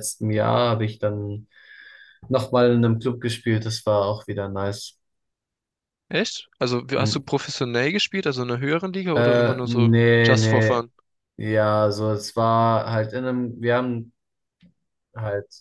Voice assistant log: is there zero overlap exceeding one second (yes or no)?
no